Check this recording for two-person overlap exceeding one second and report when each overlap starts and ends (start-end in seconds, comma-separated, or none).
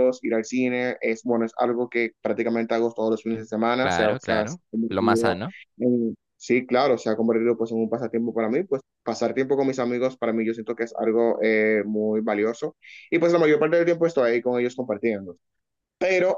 3.8-5.4